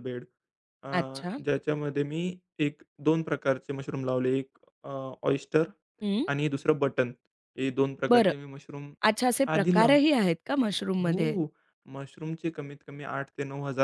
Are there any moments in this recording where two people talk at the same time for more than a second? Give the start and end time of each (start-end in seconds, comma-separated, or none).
none